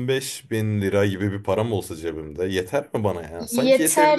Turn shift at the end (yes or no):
yes